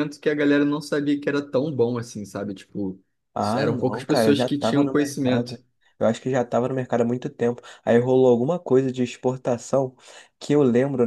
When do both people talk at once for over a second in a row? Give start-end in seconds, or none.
3.5-5.6